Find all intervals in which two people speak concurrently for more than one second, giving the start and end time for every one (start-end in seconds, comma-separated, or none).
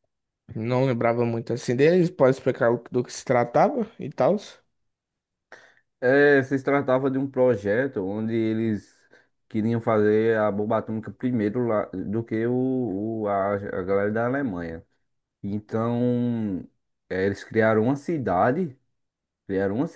none